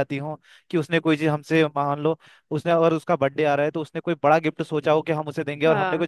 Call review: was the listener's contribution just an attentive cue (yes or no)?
yes